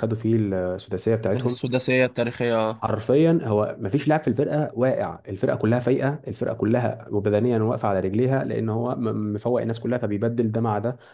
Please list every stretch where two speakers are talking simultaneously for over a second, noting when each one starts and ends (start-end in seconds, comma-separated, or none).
none